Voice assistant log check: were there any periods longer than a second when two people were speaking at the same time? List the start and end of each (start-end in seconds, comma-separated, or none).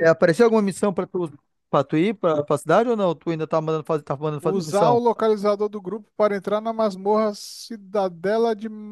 none